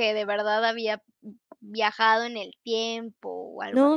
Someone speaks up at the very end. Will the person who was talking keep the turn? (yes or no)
no